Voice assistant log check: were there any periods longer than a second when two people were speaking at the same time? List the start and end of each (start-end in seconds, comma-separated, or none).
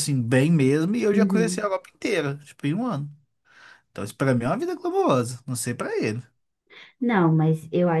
none